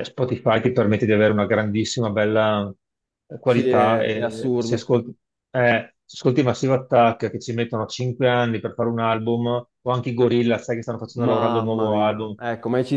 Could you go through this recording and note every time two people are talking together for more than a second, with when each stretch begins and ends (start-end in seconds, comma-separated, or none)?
3.4-4.9, 11.2-12.3